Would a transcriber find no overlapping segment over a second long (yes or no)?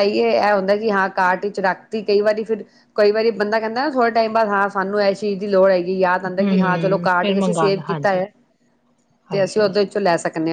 no